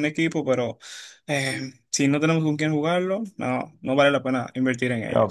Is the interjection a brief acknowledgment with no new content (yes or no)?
no